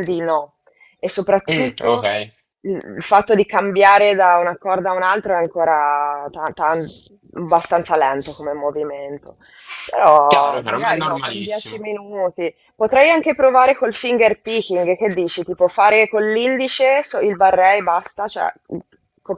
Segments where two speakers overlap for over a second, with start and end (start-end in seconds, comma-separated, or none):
10.3-11.8